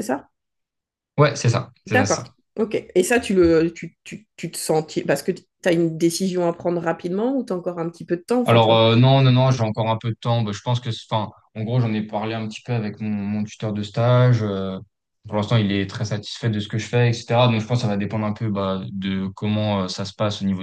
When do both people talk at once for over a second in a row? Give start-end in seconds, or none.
none